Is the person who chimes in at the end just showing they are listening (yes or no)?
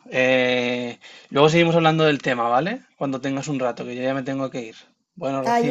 no